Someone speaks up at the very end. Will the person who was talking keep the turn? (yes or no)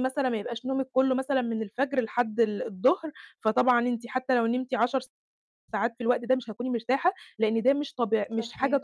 yes